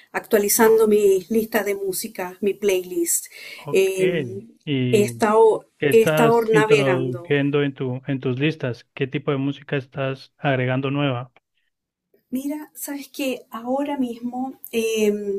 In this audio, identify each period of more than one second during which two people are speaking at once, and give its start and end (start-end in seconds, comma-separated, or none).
5.9-7.4